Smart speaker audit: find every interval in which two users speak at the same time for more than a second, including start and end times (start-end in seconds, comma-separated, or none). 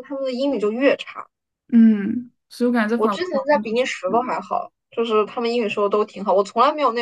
3.0-4.4